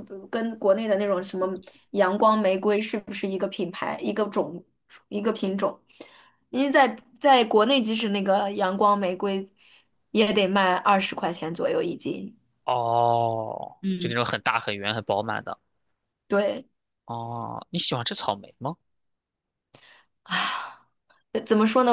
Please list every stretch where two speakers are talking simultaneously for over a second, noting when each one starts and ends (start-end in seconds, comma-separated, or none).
none